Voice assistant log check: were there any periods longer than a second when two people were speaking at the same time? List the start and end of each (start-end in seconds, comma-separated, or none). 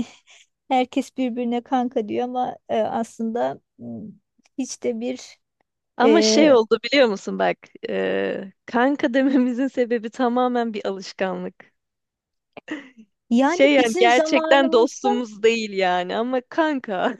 13.4-15.1